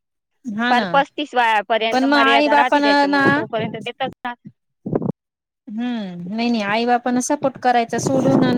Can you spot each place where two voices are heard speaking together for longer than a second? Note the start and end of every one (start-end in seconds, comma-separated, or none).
1.9-3.2